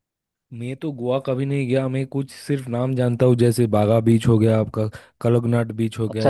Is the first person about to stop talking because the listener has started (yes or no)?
yes